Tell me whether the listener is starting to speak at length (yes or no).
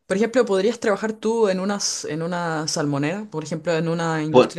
no